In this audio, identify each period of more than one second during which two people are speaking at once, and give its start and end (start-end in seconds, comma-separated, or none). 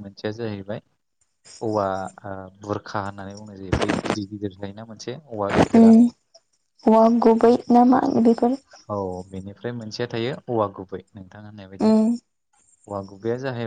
none